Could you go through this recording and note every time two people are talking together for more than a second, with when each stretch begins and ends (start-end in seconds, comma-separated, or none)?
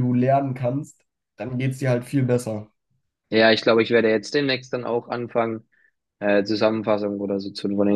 none